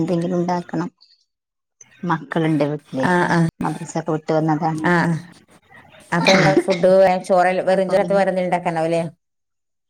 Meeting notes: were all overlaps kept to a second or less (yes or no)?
yes